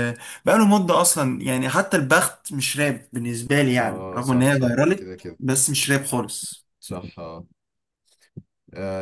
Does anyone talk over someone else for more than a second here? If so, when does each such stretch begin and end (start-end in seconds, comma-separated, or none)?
3.8-5.4